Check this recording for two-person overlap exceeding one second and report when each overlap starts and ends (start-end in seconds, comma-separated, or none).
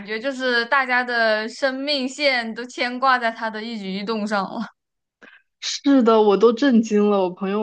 none